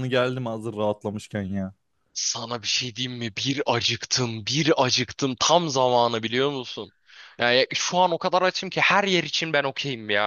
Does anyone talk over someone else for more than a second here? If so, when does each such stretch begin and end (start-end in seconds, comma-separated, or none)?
none